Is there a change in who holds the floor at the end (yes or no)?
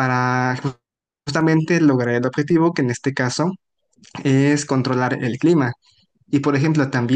no